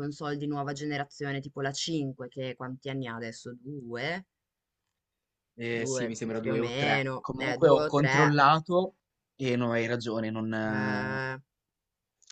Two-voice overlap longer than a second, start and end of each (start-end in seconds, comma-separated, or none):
5.7-8.4